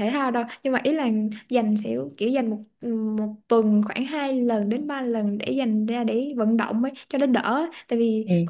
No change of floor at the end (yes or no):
yes